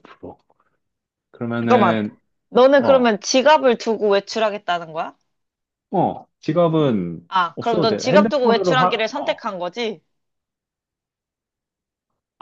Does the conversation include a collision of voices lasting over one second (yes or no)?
yes